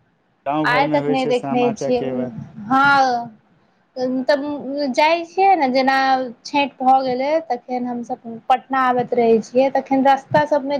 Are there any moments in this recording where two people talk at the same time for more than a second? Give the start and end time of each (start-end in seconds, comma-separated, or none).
0.7-2.1